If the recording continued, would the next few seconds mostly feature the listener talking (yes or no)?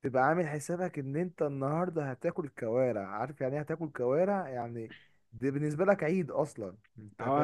yes